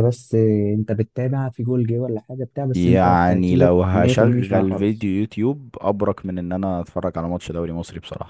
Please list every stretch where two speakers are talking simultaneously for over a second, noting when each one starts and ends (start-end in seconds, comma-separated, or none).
2.7-5.1